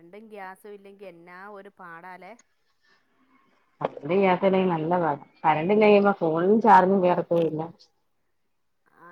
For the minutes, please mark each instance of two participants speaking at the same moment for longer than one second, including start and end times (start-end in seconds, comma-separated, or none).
none